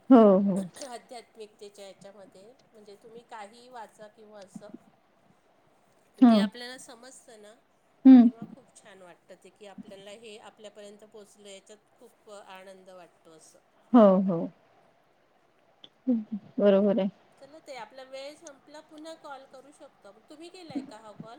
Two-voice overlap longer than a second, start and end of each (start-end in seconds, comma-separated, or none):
none